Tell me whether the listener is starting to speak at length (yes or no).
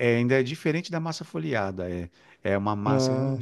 no